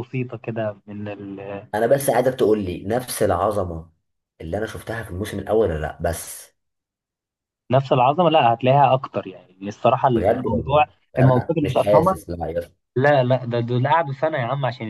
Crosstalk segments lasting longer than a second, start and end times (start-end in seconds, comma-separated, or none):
10.1-12.2